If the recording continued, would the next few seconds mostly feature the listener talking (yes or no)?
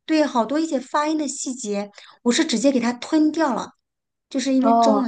no